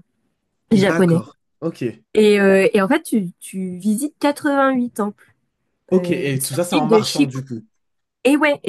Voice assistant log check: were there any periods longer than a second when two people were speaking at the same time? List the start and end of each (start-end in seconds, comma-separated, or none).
5.9-7.4